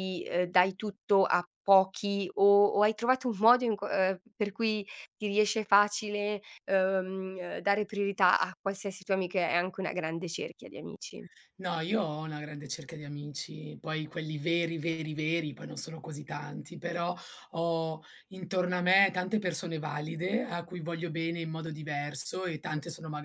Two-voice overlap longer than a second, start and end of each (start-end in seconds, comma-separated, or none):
none